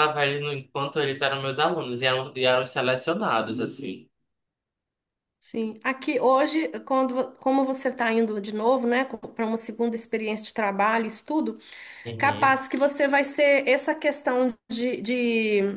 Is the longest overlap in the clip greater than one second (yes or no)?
no